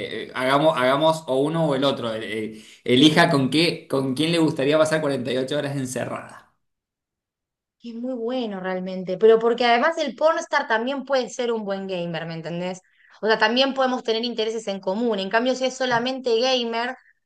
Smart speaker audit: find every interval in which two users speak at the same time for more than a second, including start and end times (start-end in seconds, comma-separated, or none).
none